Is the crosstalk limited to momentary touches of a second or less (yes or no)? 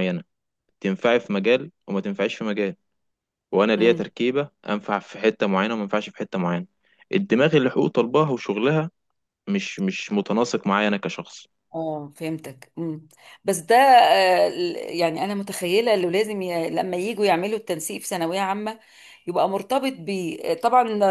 yes